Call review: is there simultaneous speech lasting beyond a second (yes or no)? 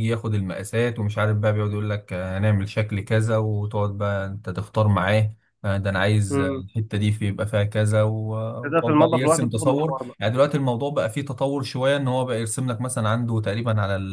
yes